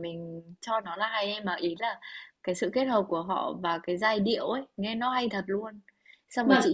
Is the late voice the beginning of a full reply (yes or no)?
no